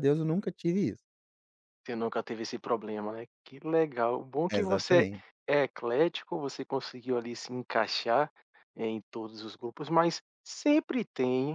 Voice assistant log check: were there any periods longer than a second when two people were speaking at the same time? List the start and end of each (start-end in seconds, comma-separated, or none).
none